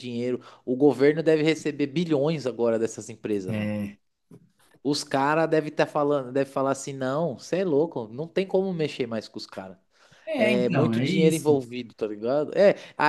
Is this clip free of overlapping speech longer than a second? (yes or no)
no